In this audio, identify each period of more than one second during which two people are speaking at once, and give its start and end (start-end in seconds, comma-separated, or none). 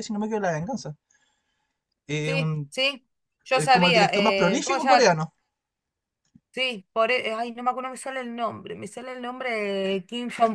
3.5-5.1